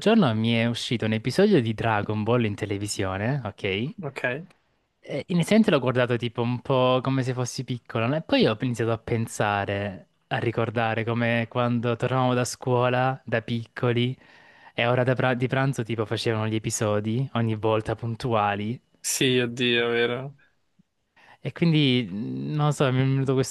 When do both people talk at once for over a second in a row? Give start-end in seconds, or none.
none